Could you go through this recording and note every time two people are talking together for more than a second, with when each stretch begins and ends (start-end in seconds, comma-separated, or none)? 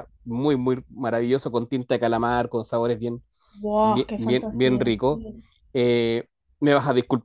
3.8-5.2